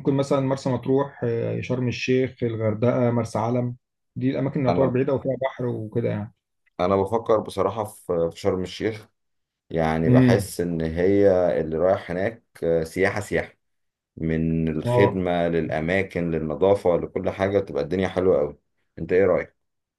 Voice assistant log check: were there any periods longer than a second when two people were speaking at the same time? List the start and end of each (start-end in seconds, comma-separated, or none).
none